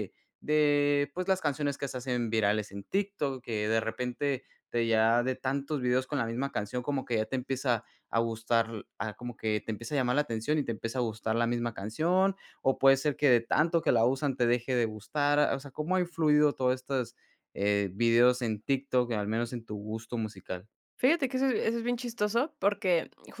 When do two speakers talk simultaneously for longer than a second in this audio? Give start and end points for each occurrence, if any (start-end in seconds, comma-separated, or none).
none